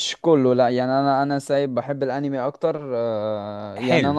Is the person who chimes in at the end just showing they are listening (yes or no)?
yes